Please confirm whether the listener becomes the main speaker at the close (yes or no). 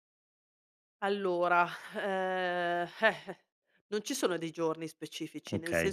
no